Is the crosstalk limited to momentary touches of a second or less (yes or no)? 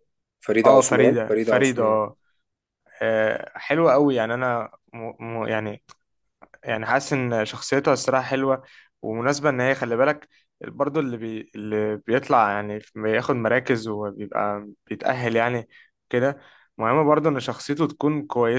no